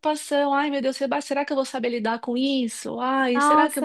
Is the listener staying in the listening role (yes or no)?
no